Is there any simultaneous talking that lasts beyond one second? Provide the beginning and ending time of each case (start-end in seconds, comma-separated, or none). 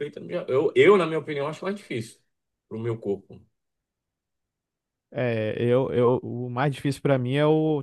none